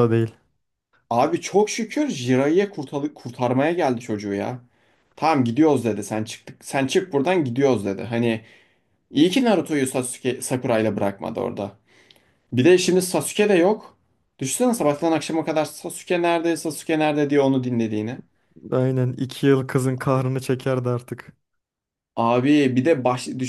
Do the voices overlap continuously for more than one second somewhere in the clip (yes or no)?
no